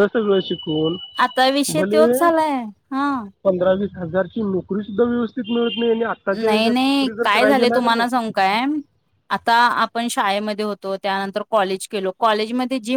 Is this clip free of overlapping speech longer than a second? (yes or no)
no